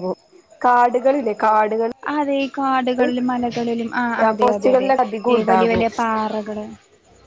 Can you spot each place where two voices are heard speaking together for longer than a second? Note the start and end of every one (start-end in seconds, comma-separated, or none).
none